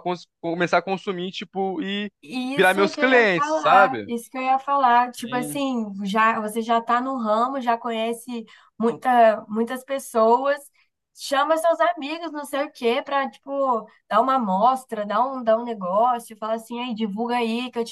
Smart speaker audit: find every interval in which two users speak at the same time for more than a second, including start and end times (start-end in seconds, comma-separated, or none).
2.5-4.1